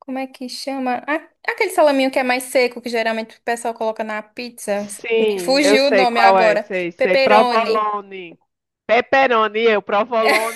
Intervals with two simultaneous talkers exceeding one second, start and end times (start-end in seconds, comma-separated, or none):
4.8-7.9